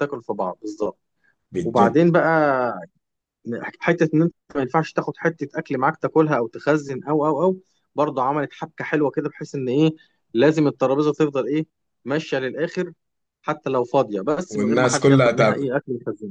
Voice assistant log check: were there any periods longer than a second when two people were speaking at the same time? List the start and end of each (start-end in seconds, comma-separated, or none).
14.5-15.7